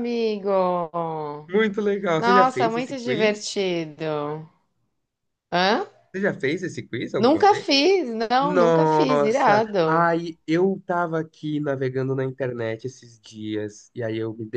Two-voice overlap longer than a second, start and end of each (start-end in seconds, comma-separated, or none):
2.1-3.5, 8.4-10.1